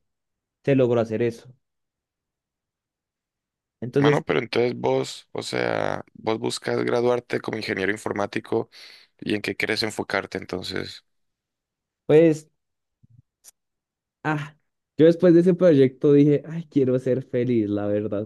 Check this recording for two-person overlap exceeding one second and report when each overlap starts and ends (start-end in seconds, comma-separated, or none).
none